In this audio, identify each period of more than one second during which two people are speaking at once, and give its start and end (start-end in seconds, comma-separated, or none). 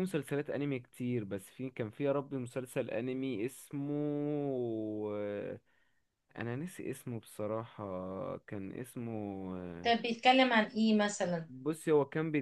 none